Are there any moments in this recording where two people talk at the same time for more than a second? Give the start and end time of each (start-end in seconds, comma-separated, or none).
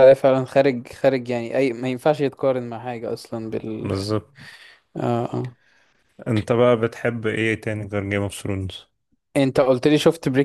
none